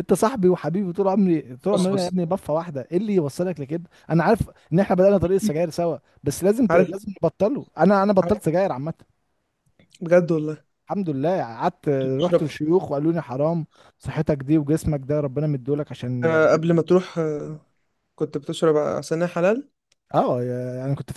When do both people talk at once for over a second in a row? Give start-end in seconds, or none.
none